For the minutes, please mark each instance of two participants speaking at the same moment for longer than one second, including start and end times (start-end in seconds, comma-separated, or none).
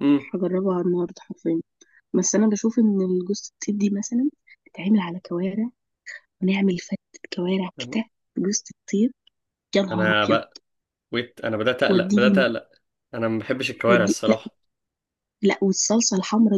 none